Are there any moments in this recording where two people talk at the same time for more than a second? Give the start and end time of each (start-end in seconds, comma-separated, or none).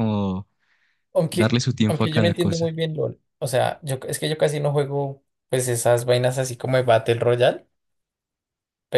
1.3-2.7